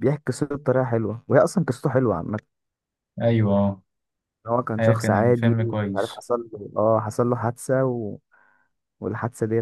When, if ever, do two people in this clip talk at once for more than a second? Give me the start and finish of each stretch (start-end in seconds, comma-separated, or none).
4.8-6.2